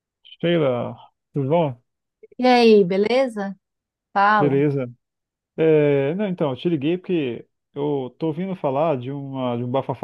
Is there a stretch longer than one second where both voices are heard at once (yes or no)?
no